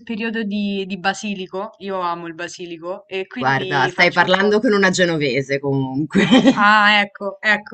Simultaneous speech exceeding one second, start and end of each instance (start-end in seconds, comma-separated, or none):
3.4-4.6